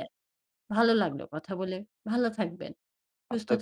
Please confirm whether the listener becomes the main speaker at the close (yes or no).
yes